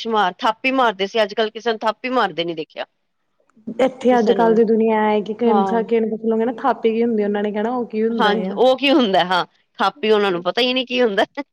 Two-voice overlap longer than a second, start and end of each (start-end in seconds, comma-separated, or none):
none